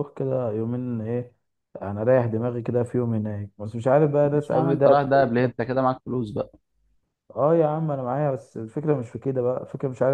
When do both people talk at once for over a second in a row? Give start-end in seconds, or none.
4.2-5.5